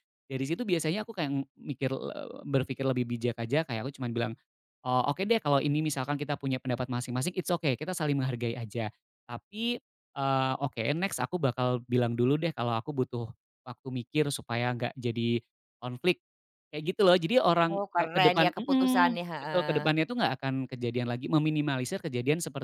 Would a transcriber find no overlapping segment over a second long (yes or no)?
no